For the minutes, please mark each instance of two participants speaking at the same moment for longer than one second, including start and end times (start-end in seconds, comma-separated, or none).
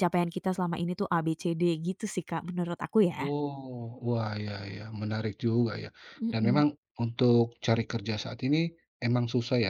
none